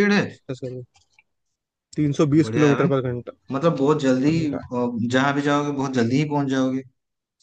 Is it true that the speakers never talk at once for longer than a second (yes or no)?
yes